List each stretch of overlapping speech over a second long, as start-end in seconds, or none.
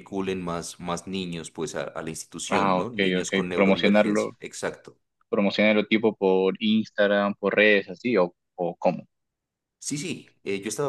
2.5-4.4